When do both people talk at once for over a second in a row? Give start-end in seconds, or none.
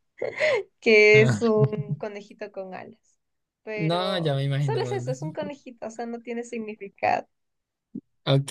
3.8-5.2